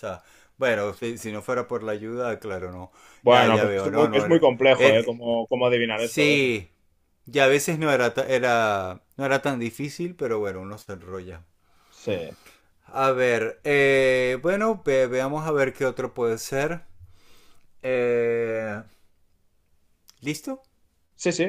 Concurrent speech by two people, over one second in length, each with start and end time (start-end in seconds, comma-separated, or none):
3.3-5.2